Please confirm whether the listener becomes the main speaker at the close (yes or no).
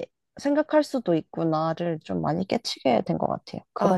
yes